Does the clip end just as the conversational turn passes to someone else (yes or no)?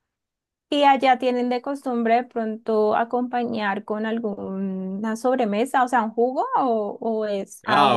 yes